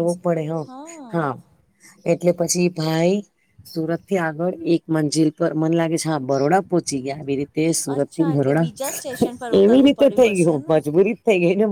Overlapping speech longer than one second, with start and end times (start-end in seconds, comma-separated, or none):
8.0-10.8